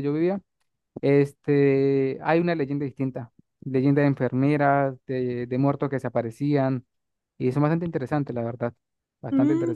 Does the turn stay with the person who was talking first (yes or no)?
no